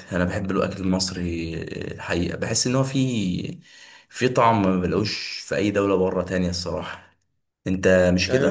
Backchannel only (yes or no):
no